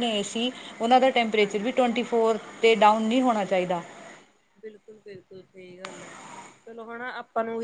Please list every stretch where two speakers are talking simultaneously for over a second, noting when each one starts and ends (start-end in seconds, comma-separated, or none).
none